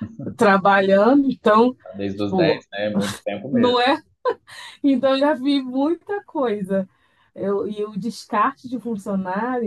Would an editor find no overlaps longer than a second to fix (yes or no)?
yes